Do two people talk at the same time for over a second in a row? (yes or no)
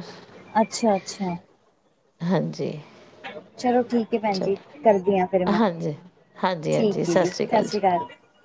no